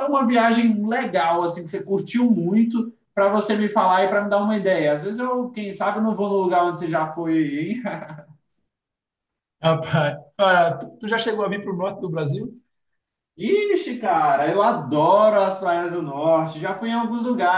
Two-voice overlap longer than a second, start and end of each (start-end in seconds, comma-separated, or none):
none